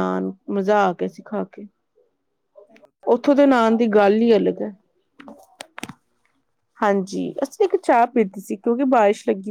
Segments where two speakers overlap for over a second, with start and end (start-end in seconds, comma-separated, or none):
3.1-4.3